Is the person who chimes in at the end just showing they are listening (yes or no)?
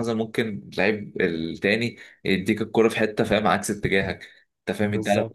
yes